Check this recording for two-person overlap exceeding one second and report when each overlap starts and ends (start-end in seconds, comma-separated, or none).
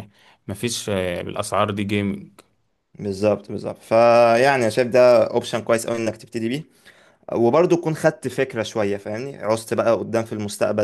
none